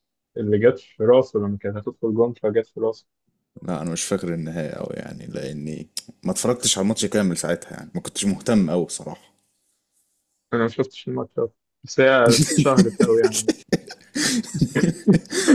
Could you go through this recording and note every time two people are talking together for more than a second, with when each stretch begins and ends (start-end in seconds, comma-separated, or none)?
none